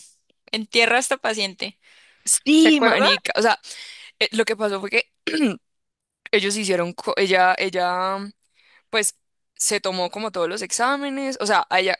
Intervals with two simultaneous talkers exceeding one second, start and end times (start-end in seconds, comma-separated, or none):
none